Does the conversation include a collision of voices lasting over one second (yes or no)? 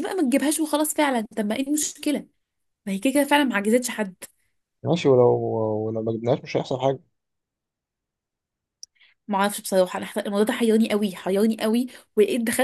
no